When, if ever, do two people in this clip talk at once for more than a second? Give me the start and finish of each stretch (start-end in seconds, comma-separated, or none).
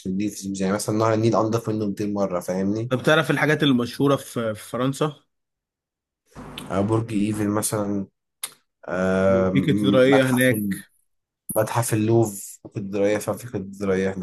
9.5-10.8